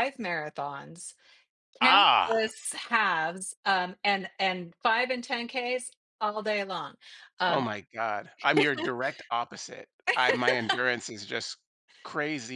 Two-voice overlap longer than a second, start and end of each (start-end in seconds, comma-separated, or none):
none